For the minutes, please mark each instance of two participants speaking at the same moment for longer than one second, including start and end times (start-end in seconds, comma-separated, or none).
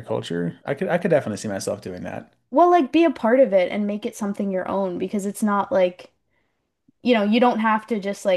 none